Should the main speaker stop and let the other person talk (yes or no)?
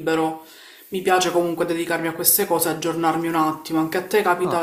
yes